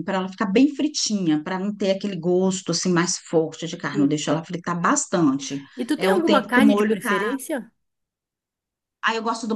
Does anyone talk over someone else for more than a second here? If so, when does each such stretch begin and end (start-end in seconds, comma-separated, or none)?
5.8-7.4